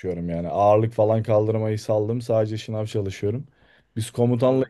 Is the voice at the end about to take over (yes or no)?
no